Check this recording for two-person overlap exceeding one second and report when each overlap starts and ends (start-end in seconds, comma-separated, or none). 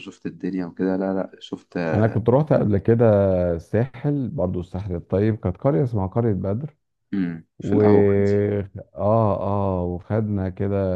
none